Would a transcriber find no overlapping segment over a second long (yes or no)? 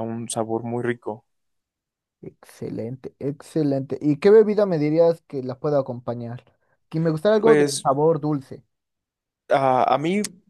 yes